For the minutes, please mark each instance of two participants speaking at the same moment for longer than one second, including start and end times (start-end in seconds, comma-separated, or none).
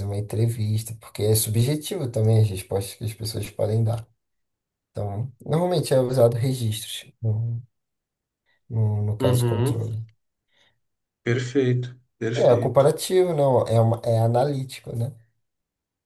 none